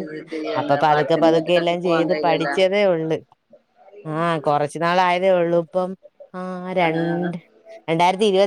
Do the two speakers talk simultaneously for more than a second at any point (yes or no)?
yes